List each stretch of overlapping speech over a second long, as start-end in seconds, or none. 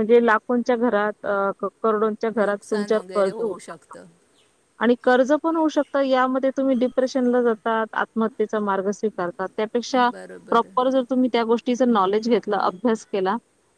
2.4-3.9